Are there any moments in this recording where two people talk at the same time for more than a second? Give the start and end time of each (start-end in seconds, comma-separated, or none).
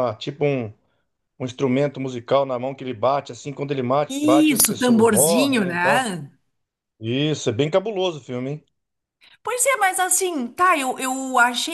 4.1-6.1